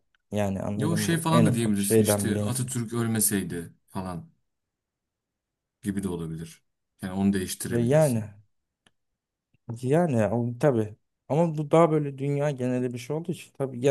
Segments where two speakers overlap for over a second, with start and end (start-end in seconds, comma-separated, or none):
0.8-2.7